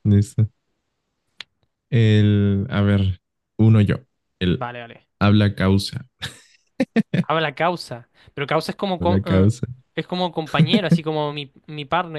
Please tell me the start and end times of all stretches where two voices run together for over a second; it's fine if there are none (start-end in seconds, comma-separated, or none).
none